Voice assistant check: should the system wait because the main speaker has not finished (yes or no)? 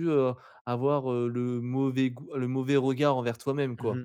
no